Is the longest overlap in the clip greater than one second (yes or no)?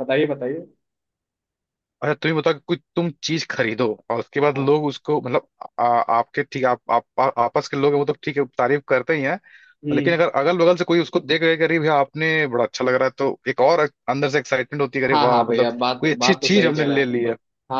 yes